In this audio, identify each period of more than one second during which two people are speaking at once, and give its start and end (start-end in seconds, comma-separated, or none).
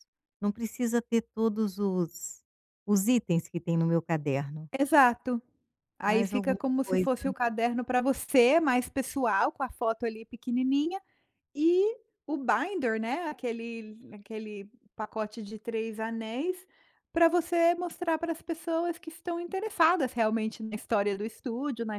6.0-7.3